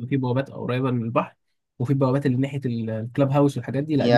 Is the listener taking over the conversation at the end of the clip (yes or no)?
yes